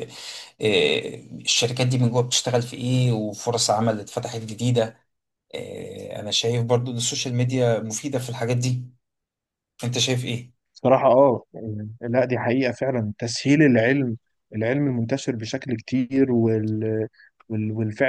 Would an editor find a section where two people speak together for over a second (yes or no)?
no